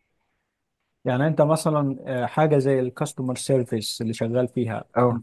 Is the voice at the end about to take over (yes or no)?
no